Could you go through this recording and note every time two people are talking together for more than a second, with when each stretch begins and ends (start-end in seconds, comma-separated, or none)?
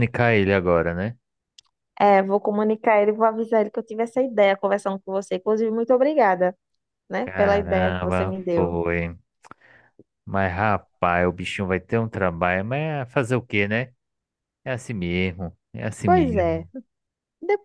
7.2-8.8